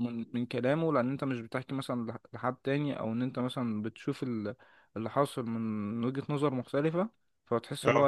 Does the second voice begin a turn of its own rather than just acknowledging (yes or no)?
no